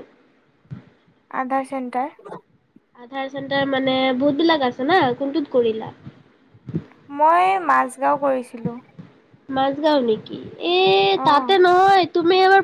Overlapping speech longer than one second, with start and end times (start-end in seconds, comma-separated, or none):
none